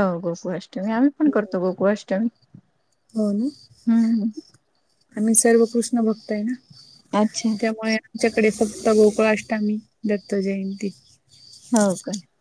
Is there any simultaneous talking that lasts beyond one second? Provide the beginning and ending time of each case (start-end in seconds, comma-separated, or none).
none